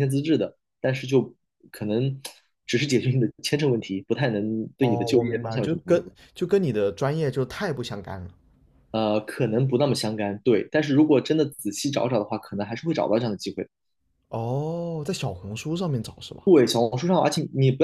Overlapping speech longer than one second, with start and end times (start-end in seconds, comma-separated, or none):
4.8-6.0